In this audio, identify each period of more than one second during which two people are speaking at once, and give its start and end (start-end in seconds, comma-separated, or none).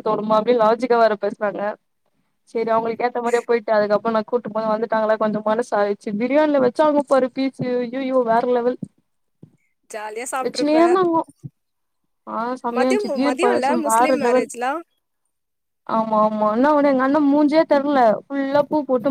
12.8-14.5